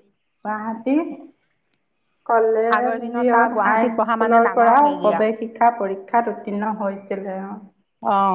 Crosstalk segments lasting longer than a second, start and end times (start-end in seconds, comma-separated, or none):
2.8-5.2